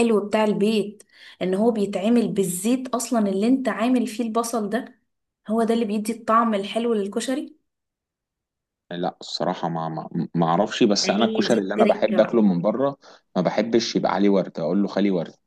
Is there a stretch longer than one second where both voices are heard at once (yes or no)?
yes